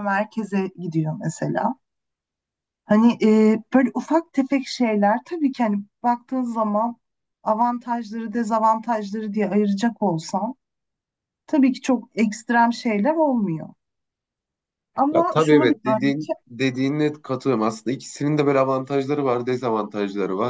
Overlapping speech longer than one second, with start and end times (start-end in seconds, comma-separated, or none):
15.1-16.3